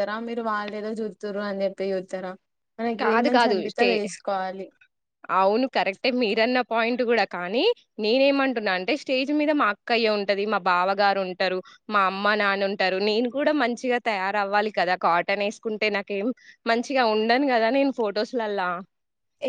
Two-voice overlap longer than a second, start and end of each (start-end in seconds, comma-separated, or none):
none